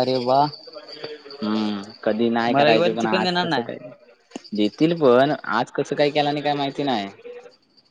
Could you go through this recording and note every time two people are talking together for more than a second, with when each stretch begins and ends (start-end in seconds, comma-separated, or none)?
2.5-3.7